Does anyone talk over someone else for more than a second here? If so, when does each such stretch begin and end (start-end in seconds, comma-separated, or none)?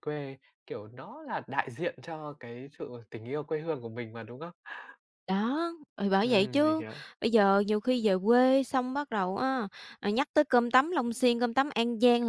none